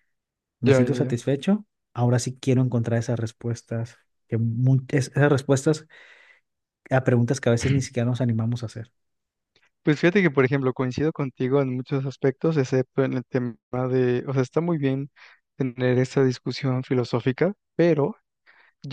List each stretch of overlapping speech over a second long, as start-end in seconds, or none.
none